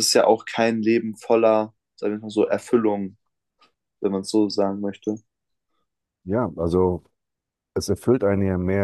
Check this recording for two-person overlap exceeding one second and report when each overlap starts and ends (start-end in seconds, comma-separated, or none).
none